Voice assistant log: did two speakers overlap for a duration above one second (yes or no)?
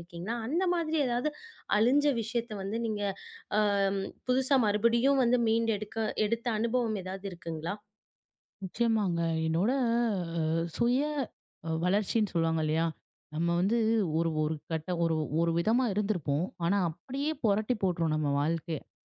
no